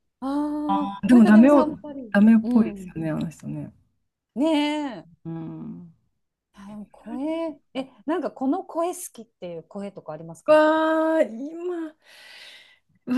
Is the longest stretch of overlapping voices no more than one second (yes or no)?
no